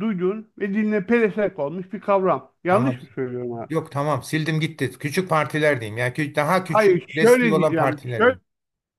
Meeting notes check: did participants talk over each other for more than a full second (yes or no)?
yes